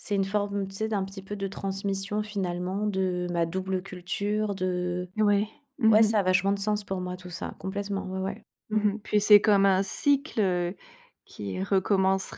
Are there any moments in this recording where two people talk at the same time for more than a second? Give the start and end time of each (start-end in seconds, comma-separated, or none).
none